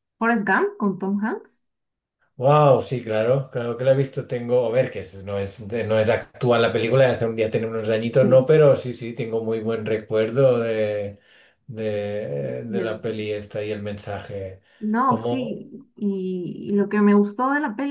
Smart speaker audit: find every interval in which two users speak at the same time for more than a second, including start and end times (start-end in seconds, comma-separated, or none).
none